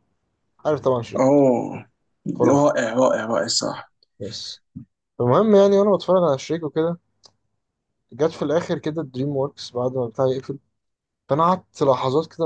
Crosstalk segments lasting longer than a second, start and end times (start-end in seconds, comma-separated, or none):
none